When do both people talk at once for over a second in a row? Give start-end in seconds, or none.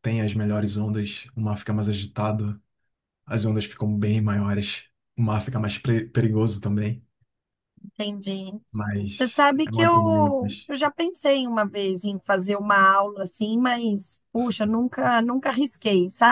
9.1-10.7